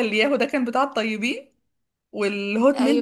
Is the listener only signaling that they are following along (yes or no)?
yes